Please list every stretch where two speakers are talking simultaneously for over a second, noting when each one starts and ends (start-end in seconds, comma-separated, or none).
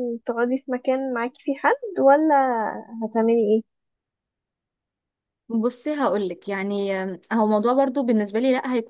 none